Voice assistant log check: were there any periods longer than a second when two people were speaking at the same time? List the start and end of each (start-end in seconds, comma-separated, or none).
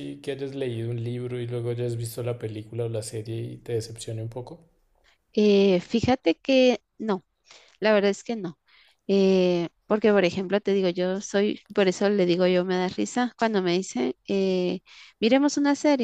none